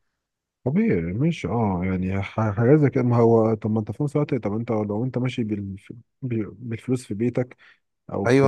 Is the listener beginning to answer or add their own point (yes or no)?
yes